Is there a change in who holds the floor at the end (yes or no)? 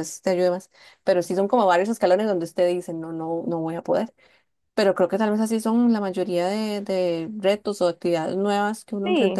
yes